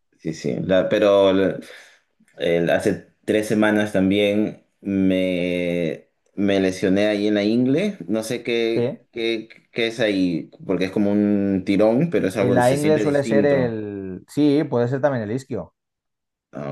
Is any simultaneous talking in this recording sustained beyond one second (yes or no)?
yes